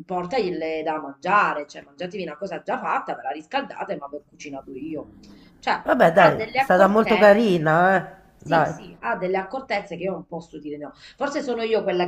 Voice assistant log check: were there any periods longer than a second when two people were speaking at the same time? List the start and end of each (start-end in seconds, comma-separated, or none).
5.8-7.6